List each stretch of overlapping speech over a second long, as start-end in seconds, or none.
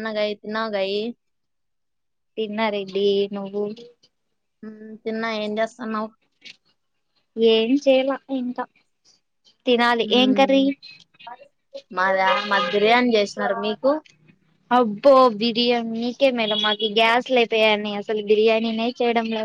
none